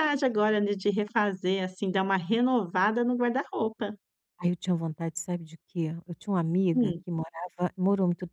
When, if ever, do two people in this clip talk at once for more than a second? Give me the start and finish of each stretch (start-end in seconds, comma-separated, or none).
none